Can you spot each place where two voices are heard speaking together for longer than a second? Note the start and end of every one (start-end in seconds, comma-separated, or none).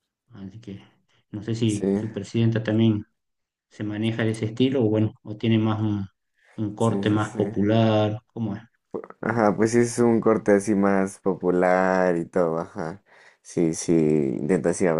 none